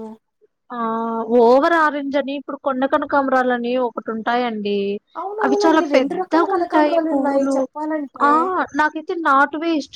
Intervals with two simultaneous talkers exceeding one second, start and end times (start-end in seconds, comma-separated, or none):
5.4-7.5